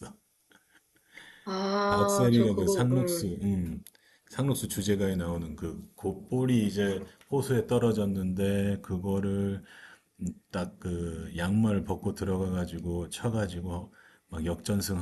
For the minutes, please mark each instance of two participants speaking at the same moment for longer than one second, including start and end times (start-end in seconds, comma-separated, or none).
1.9-3.3